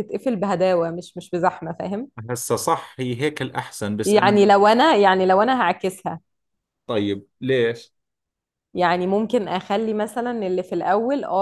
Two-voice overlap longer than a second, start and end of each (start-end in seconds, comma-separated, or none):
none